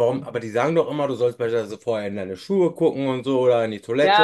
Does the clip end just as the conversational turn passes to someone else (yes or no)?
yes